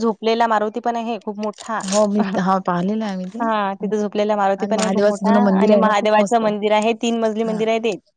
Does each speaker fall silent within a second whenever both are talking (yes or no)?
no